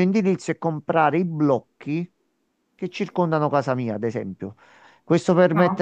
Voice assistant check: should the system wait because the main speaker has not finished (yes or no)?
yes